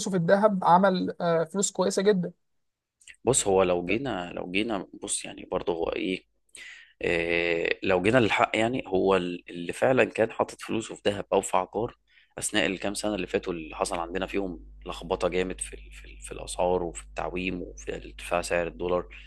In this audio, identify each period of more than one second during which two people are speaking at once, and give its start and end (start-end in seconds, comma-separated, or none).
none